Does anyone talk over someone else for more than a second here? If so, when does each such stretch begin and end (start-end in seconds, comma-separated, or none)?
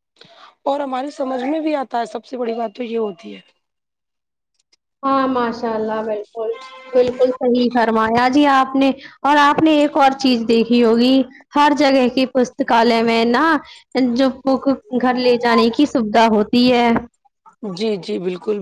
none